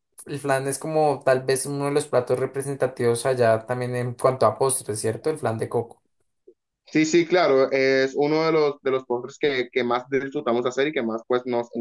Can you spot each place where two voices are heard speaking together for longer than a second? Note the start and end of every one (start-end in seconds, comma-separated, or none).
none